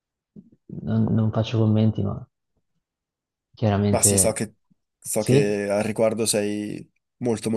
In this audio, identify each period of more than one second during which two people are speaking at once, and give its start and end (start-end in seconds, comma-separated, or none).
none